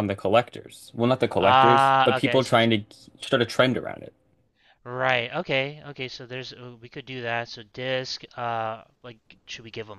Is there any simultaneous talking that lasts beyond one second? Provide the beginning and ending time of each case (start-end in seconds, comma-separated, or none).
1.4-2.7